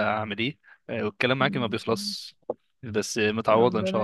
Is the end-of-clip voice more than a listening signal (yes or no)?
yes